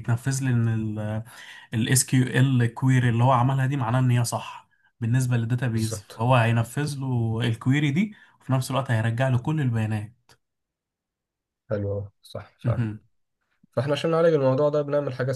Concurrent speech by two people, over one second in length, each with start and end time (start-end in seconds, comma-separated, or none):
none